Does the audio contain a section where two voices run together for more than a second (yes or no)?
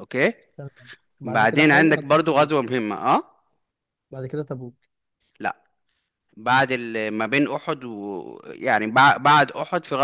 yes